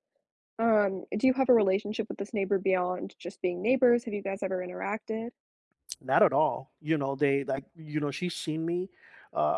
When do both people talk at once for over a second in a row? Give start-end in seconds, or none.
none